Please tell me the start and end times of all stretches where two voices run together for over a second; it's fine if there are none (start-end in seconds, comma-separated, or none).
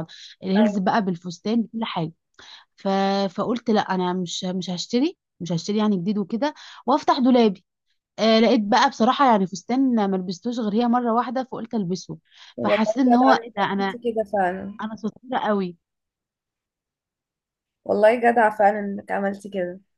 12.6-14.0